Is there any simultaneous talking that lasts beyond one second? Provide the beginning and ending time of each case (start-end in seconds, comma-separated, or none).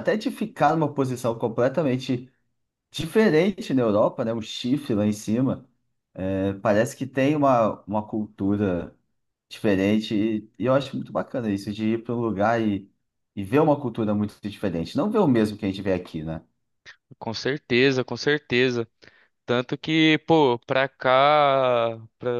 none